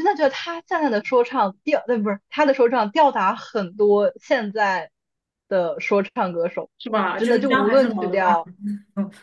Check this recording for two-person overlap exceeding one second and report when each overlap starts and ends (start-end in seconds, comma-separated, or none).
7.2-8.4